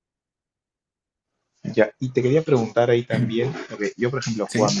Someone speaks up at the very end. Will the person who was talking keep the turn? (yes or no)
yes